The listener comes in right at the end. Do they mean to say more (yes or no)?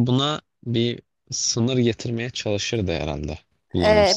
yes